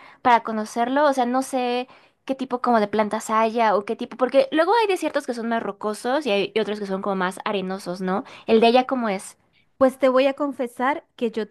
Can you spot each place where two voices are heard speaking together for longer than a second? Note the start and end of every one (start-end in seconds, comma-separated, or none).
none